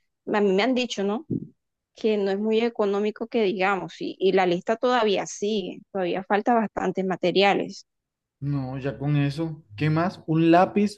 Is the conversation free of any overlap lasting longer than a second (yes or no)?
yes